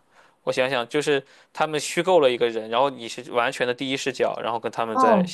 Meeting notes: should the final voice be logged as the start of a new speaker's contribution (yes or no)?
yes